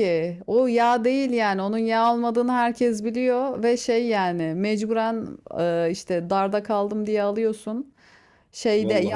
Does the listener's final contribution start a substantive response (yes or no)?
no